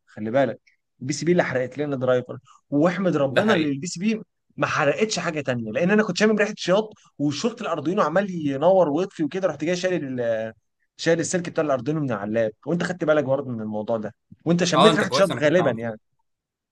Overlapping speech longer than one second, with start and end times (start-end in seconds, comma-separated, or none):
14.8-16.0